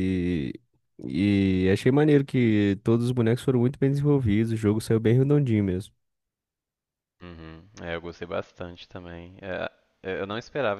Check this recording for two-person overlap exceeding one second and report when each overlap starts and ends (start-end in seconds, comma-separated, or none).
none